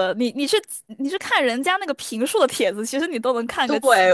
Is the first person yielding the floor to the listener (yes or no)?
yes